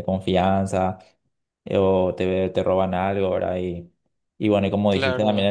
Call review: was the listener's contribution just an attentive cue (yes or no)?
yes